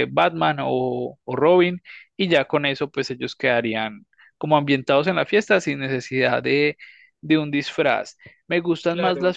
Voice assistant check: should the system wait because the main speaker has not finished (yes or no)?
yes